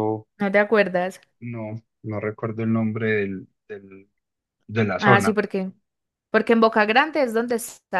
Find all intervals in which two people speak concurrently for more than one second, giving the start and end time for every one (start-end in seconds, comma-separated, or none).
none